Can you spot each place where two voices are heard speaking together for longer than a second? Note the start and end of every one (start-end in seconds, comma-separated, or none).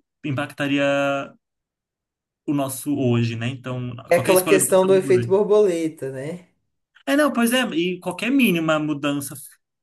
4.1-5.3